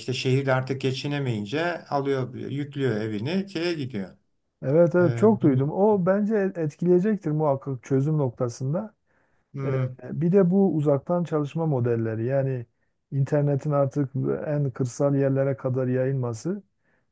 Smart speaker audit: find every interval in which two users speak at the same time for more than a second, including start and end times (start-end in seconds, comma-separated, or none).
none